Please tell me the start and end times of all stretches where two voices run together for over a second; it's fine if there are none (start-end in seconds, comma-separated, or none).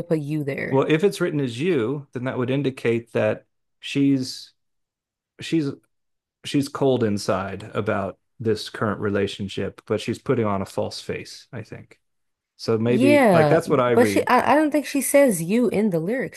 12.8-14.3